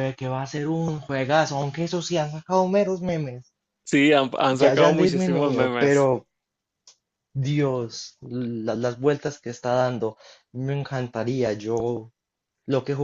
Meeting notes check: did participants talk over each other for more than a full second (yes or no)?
yes